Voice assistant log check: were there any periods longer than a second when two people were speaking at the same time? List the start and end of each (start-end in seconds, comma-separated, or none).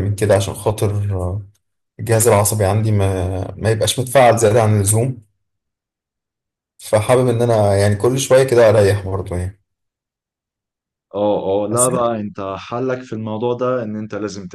none